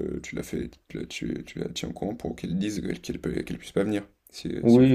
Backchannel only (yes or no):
no